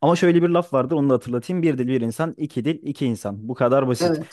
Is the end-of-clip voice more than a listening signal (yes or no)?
no